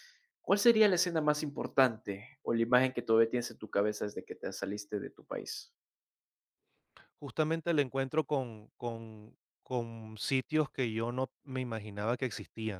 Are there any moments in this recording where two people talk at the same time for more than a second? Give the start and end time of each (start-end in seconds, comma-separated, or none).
none